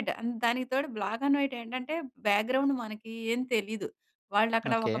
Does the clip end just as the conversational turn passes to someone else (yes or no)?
no